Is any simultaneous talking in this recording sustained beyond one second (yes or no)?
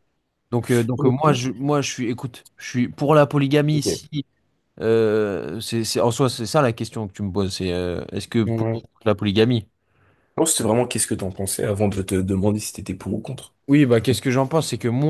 no